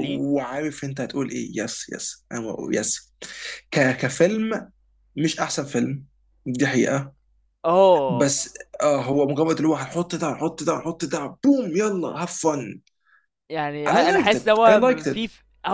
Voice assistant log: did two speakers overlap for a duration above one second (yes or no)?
yes